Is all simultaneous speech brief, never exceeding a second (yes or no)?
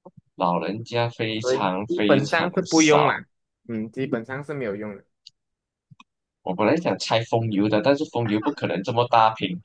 no